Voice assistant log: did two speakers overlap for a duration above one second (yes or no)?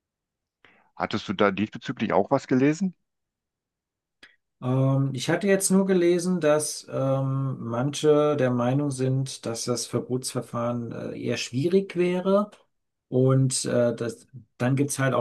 no